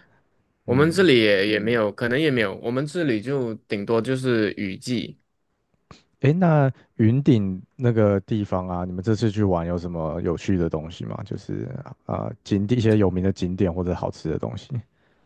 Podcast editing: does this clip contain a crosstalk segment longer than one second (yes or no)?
no